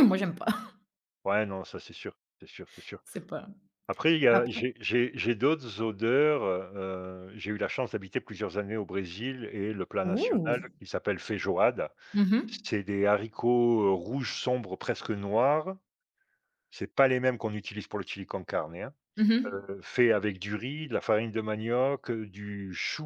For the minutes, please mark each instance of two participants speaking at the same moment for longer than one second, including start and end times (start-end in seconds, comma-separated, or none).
none